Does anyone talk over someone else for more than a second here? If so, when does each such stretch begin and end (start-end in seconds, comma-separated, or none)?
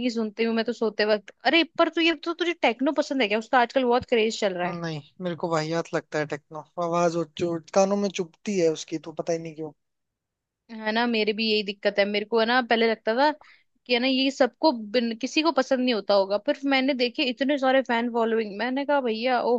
none